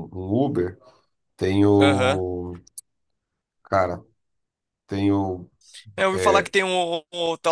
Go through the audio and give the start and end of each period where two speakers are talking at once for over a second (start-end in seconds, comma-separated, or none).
none